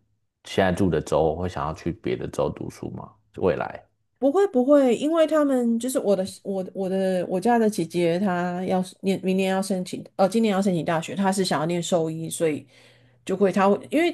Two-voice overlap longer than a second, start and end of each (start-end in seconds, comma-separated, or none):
none